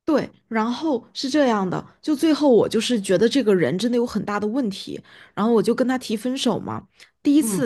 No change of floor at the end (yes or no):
yes